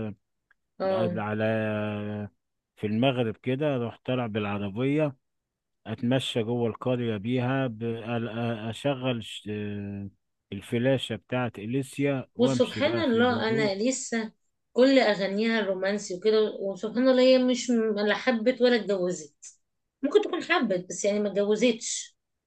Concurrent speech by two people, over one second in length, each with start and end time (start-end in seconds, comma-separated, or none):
12.4-13.7